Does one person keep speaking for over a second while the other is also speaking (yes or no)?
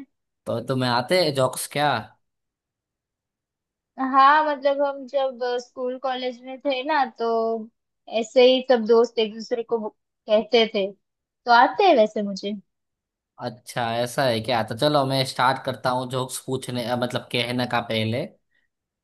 no